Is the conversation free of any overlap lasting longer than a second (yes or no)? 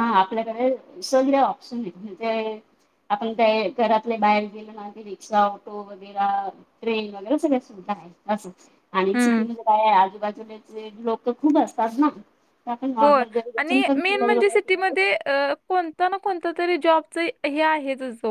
no